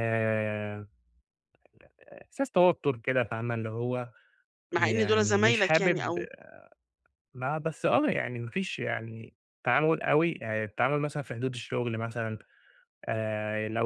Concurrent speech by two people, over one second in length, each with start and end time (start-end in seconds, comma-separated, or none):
4.8-6.2